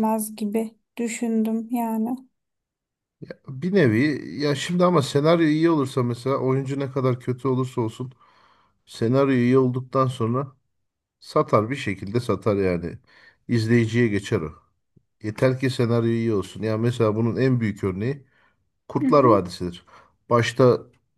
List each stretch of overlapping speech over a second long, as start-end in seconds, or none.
none